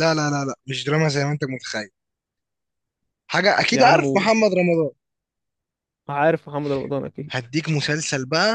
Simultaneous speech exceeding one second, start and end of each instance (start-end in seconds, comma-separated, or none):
none